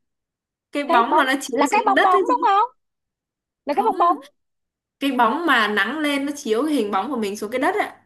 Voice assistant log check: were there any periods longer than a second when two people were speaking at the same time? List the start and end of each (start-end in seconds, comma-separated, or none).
0.8-2.5